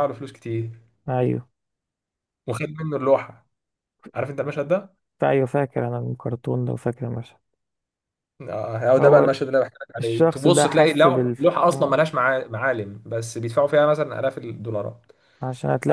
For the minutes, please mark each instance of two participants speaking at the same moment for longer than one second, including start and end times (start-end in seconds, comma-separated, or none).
10.0-12.0